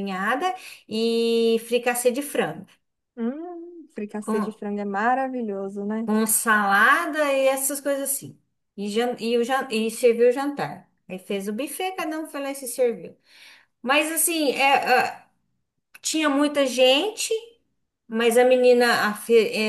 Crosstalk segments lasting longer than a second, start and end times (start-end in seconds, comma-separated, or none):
none